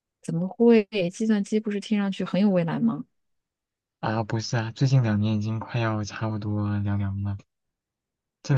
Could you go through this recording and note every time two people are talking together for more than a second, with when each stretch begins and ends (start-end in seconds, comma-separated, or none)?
none